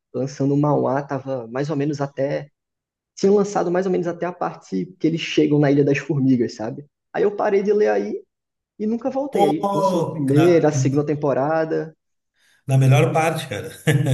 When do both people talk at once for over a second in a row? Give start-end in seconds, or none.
9.3-10.7